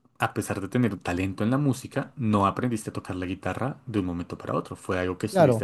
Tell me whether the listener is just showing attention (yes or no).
yes